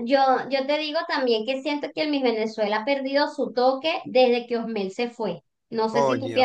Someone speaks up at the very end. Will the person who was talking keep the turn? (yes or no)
no